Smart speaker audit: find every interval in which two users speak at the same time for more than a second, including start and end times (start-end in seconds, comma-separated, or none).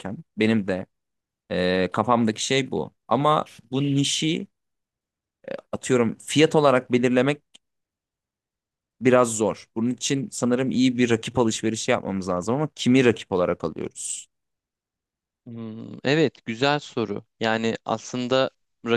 none